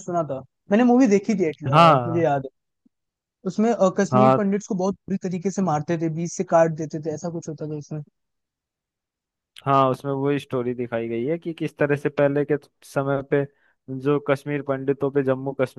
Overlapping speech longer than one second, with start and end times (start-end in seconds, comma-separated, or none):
none